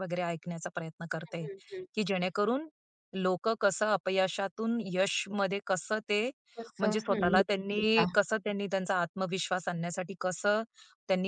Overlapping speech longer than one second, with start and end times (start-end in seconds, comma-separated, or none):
6.8-8.1